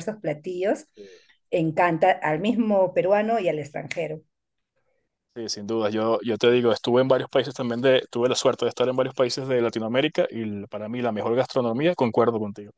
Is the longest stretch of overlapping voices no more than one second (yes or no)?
yes